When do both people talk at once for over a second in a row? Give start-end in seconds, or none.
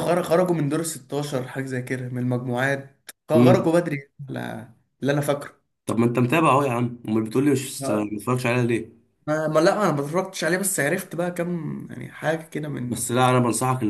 none